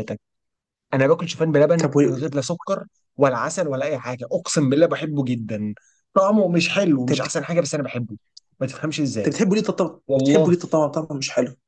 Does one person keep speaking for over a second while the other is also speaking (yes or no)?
no